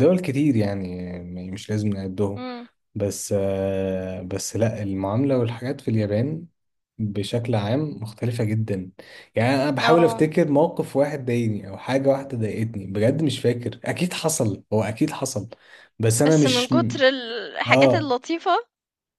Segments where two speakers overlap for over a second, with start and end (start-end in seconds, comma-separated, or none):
none